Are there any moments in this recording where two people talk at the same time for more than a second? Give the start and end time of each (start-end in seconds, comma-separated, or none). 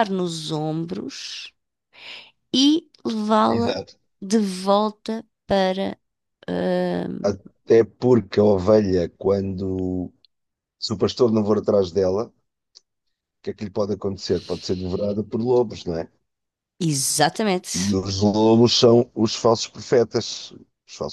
none